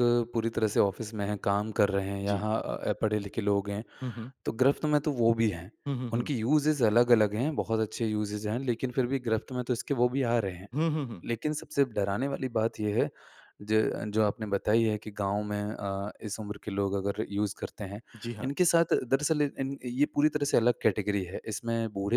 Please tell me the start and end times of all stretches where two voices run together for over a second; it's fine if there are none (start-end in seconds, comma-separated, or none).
none